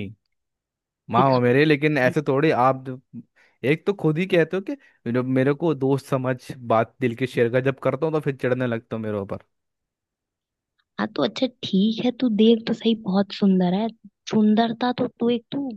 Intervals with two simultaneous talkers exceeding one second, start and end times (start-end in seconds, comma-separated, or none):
none